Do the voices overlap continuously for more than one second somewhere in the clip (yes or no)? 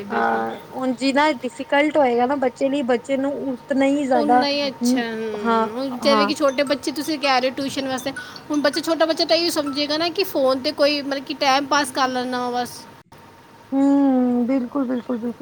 no